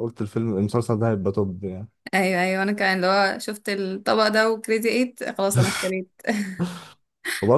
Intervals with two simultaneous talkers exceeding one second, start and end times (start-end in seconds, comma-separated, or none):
none